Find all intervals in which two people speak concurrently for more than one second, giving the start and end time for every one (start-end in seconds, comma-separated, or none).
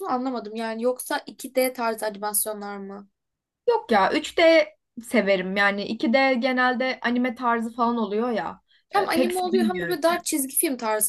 8.9-10.2